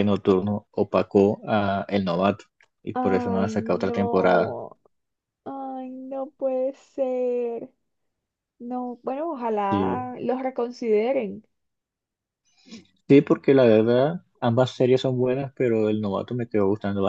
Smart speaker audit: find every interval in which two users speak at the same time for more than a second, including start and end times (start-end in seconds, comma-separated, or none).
2.9-4.5